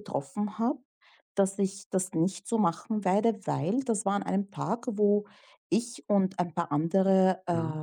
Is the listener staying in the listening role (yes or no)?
yes